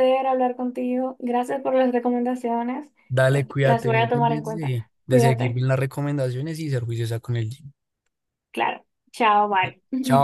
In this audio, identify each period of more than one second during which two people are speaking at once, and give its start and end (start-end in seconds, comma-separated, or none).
3.6-5.6